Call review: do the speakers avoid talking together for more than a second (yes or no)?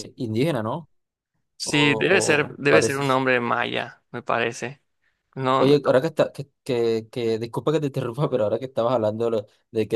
no